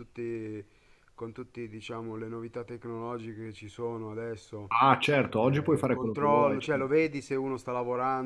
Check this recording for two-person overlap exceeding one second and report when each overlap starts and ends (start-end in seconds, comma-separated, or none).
5.4-6.9